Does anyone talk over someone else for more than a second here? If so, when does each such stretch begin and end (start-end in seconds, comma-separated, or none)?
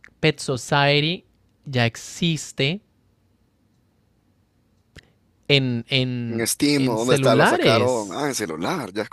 6.3-8.3